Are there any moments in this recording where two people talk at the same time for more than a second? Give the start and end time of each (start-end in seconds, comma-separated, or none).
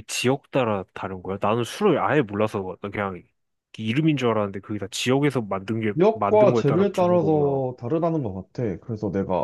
5.9-7.6